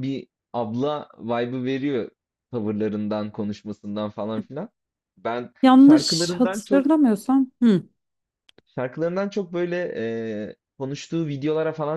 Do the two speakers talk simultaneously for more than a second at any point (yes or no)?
yes